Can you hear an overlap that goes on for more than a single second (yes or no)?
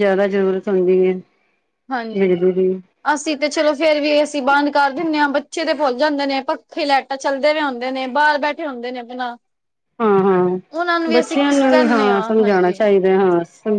yes